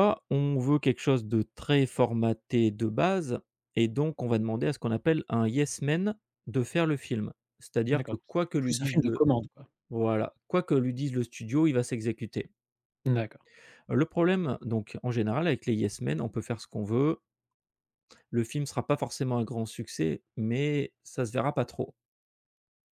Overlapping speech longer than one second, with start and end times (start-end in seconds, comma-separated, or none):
7.9-9.2